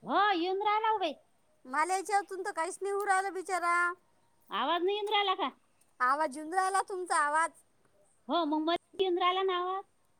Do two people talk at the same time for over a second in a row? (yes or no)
no